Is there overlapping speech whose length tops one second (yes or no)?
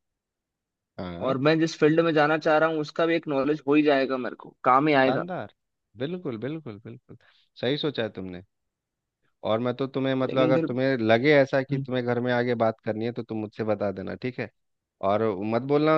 no